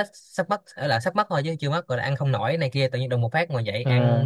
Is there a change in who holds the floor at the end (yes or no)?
no